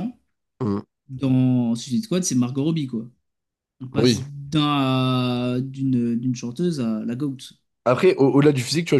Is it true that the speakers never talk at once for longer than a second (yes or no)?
yes